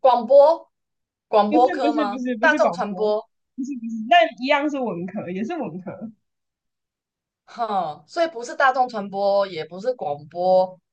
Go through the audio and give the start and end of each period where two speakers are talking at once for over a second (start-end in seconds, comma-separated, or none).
1.5-3.1